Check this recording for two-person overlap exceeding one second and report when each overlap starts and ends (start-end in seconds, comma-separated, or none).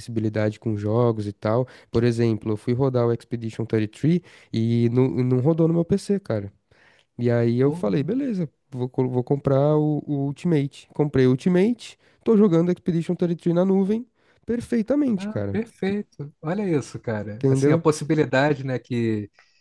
none